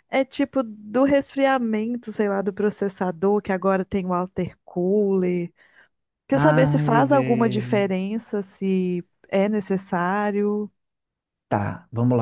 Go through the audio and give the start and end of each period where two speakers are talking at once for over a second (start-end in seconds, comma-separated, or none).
6.3-7.8